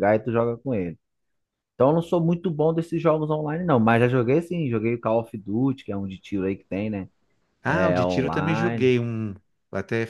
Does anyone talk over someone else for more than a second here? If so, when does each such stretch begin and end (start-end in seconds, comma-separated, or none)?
7.7-8.9